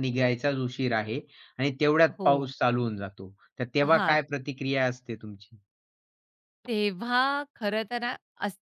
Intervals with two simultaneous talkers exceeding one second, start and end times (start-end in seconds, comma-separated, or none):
none